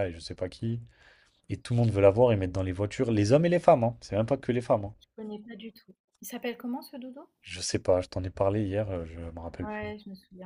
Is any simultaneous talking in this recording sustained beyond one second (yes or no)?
no